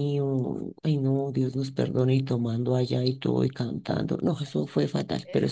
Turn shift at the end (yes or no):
yes